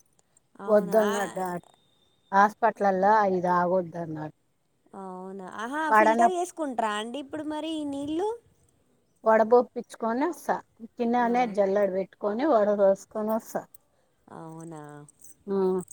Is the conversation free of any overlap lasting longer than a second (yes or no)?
yes